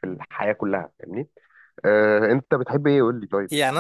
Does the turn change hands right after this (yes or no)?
yes